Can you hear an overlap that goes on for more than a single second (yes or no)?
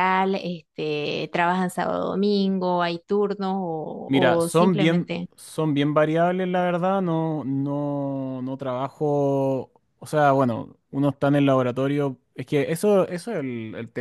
yes